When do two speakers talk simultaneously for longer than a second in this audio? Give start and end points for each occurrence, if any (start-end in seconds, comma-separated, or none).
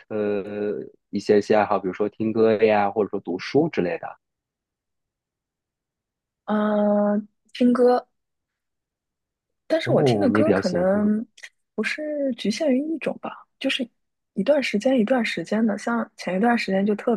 9.8-11.1